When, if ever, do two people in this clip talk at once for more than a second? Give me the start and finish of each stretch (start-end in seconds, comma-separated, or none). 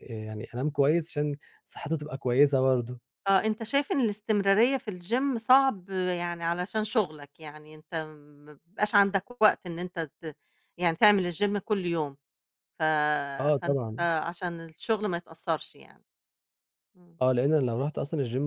none